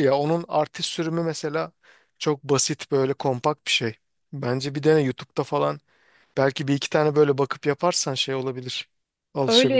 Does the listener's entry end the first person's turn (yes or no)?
yes